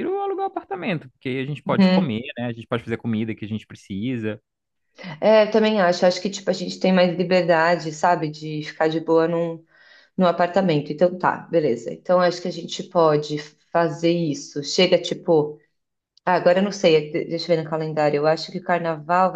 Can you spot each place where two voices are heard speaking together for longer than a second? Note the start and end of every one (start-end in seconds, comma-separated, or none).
none